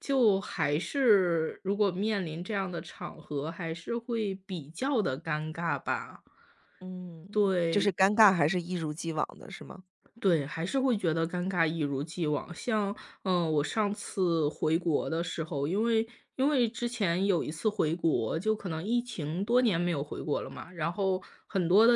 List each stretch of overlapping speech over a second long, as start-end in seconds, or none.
none